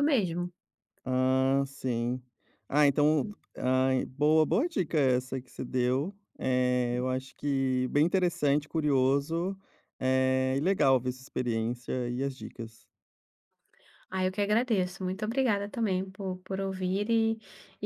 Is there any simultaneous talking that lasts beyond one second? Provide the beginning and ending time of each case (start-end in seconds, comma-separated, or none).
none